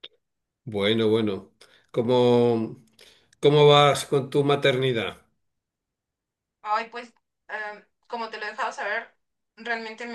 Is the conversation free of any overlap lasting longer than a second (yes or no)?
yes